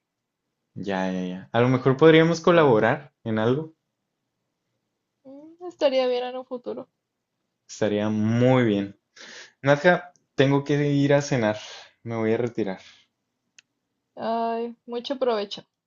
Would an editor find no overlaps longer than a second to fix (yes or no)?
yes